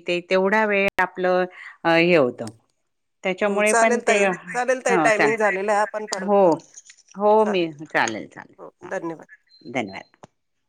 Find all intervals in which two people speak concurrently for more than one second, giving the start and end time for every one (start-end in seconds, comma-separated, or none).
3.5-6.4